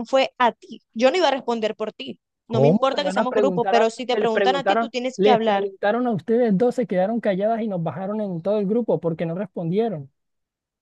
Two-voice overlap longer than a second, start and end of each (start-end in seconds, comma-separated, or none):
2.5-5.7